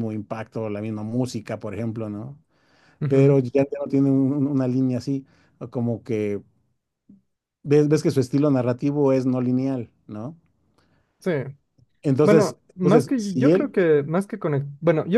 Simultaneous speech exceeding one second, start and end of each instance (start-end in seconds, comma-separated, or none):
12.2-13.7